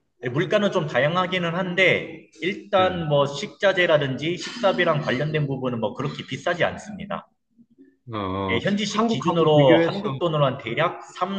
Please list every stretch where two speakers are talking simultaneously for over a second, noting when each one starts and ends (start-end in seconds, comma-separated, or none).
8.5-10.1